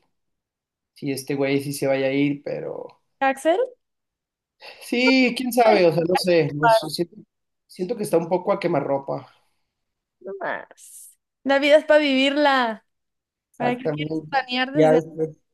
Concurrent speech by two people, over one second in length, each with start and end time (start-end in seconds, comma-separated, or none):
13.6-15.0